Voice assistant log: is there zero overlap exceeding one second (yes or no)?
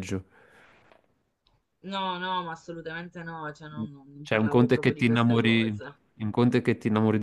no